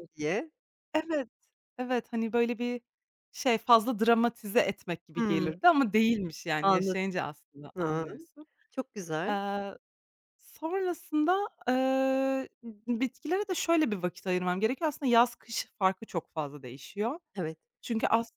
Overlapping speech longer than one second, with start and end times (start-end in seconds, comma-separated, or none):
none